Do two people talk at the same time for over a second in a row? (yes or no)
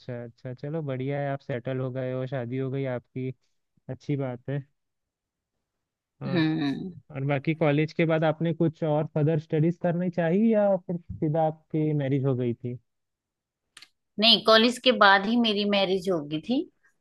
no